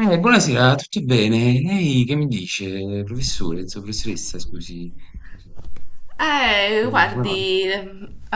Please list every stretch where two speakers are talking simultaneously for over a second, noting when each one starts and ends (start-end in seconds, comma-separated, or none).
none